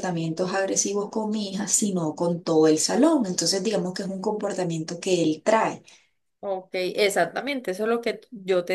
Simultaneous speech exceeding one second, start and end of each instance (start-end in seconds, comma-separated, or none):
none